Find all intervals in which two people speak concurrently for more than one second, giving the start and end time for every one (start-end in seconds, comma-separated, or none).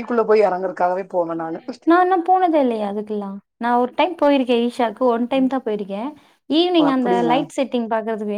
none